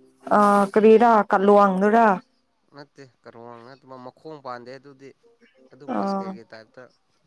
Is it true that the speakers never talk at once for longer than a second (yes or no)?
yes